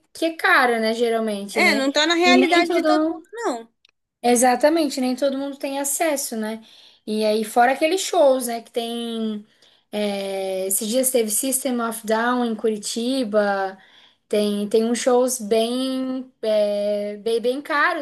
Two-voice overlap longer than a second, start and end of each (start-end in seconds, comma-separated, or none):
1.5-3.2